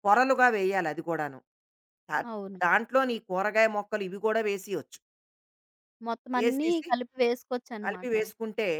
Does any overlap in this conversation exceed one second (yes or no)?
no